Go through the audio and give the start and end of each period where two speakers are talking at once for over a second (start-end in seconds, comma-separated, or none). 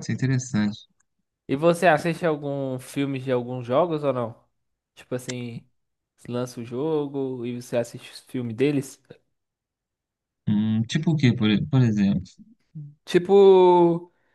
none